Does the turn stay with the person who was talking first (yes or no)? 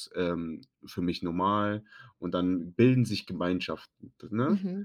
no